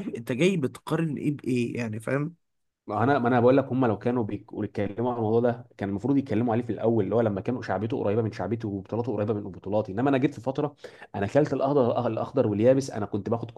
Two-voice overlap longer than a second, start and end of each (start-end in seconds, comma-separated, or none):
none